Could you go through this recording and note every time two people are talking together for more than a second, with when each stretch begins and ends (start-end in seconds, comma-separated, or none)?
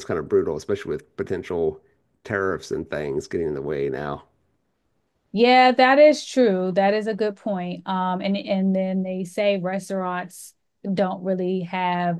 none